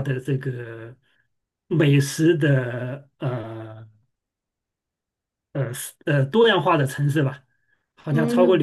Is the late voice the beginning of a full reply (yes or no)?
no